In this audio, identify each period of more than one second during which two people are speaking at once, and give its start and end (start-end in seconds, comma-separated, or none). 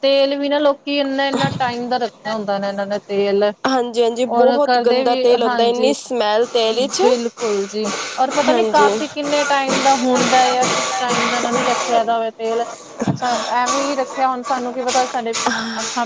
4.5-6.0